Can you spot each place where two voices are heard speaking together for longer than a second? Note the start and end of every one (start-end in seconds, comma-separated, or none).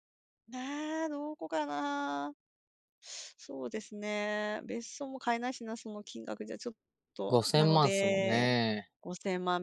7.3-8.5